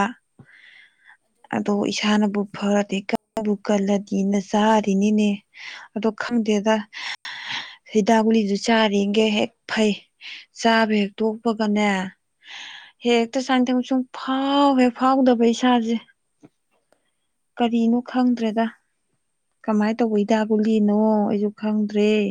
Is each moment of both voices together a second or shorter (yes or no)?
no